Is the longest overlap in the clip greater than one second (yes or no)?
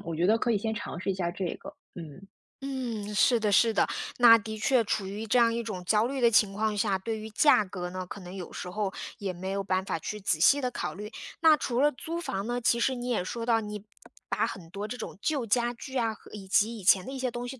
no